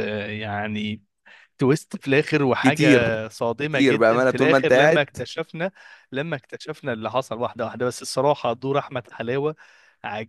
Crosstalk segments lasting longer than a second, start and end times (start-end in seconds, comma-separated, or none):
3.6-5.1